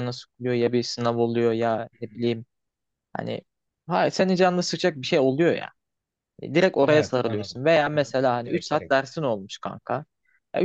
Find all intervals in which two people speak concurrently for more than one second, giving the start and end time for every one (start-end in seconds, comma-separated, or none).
6.8-8.9